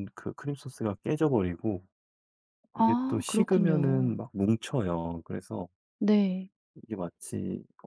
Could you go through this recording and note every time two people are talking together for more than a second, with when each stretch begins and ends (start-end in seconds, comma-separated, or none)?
2.8-4.2